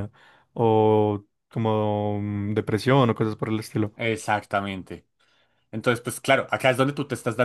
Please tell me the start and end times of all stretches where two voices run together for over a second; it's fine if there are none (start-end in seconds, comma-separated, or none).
none